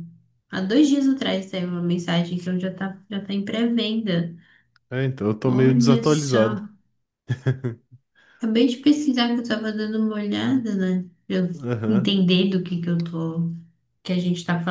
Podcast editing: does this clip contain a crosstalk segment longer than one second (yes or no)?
yes